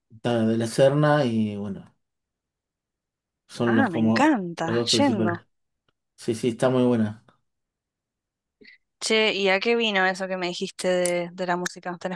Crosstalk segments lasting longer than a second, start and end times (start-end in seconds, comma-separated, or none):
3.6-5.3